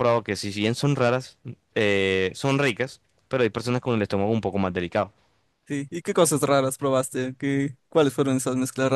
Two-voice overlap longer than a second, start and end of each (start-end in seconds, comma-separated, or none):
none